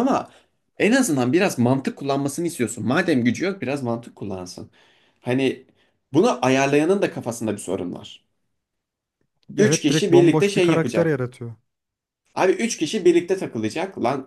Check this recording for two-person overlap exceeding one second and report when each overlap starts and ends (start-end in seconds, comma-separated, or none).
9.6-11.2